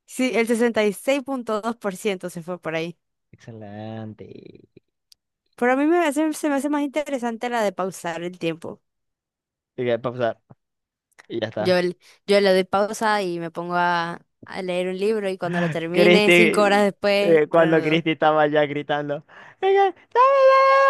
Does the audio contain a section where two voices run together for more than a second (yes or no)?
yes